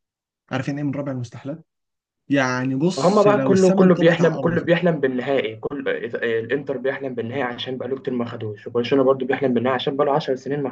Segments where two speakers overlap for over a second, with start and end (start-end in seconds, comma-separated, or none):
3.0-4.7